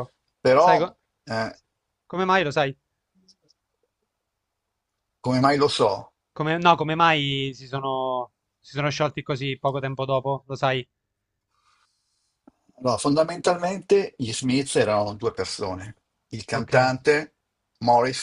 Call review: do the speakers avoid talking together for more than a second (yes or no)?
yes